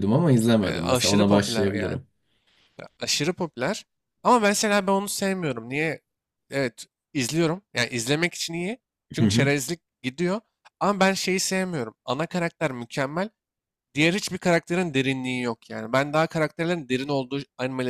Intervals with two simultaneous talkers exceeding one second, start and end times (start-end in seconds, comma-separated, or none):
0.6-2.0